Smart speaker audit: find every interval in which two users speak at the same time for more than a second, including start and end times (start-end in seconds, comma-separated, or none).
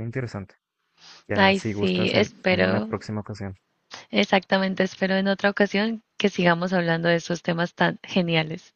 1.3-2.9